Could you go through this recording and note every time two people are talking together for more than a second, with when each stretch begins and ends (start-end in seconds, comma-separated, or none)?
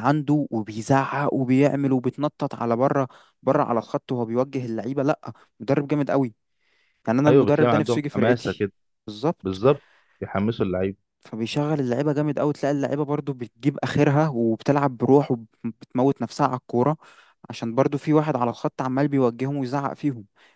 7.3-8.7